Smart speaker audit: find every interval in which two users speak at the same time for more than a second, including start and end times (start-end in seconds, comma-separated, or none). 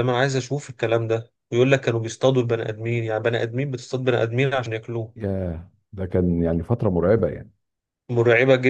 none